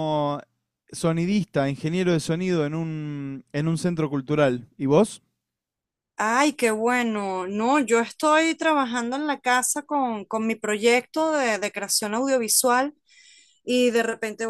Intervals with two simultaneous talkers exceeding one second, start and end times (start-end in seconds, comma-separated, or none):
none